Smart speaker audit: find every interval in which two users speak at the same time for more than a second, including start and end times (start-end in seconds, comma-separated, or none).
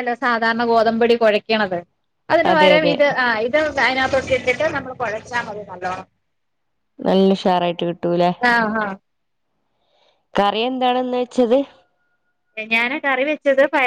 none